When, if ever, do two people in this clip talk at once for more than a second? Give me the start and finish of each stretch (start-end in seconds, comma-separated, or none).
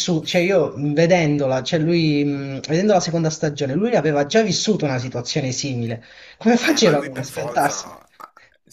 6.6-7.9